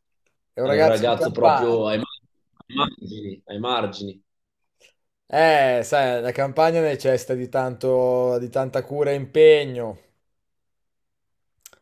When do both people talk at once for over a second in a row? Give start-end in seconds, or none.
0.6-1.9